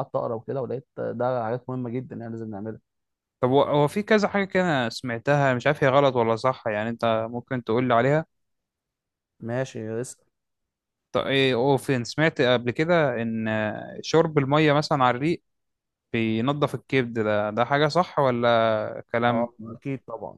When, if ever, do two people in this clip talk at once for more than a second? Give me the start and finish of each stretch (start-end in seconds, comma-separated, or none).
none